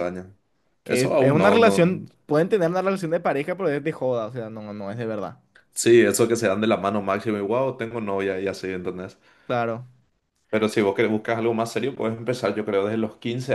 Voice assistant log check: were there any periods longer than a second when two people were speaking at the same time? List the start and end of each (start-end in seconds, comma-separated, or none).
0.8-2.1